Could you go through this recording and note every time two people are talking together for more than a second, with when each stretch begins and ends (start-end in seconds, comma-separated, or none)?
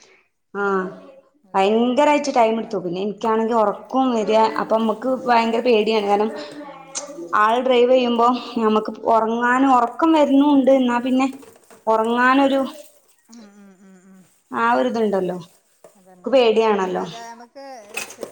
1.6-2.9